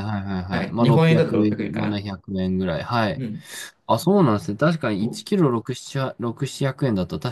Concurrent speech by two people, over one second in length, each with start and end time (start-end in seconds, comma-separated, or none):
0.5-2.0